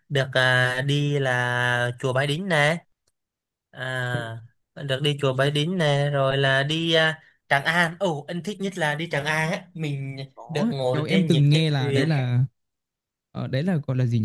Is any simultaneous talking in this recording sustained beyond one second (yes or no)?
yes